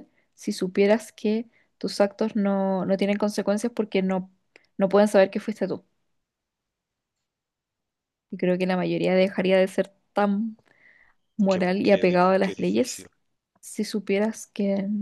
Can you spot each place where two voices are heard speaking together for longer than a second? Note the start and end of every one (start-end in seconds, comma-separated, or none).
11.5-13.1